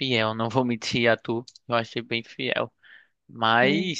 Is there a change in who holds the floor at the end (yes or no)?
no